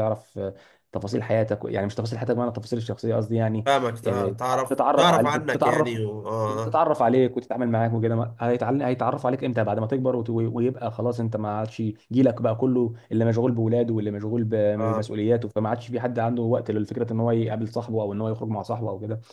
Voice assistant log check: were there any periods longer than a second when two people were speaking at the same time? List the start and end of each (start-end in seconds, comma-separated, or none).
4.0-6.0